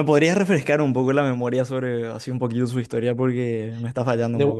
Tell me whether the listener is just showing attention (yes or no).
no